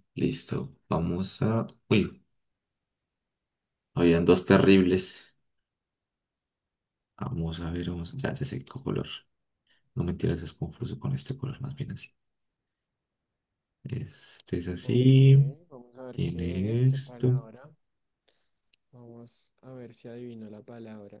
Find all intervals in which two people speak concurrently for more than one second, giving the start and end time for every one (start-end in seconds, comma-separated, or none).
16.1-17.4